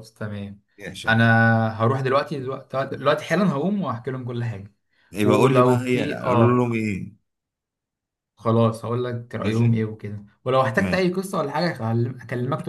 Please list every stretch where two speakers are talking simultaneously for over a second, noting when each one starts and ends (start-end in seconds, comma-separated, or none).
5.2-6.7